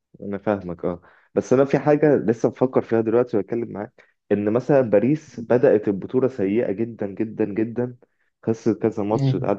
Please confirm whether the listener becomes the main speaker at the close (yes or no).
no